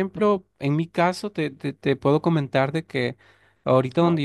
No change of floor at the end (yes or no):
yes